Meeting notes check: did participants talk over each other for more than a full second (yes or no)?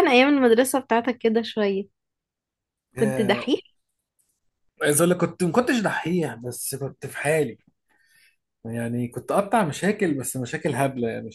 no